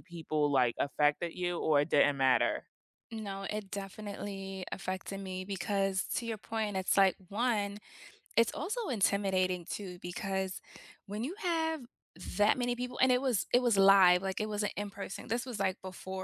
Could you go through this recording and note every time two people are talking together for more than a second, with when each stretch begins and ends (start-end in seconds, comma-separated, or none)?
none